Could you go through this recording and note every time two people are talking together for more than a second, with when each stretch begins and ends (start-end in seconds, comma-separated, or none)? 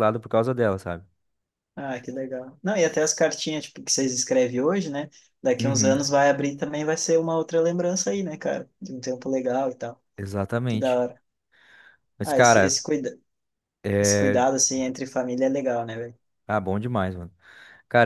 none